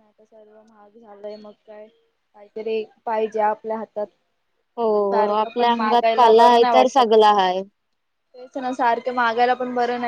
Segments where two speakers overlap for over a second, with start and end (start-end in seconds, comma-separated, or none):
5.4-7.1